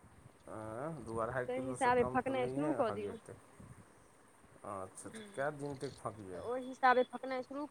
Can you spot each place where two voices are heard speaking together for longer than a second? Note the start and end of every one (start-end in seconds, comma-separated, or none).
1.3-3.1